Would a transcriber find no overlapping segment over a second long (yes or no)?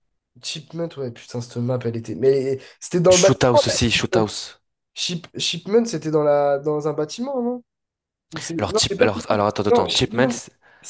no